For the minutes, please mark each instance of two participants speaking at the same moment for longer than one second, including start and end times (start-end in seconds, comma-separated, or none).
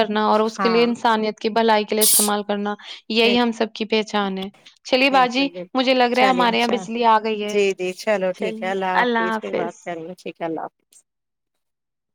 5.1-6.8